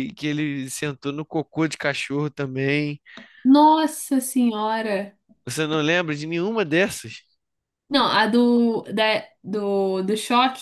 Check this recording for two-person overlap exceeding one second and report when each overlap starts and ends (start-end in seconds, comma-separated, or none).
none